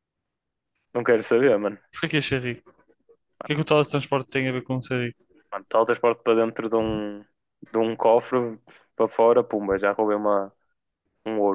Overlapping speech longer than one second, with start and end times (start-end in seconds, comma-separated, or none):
none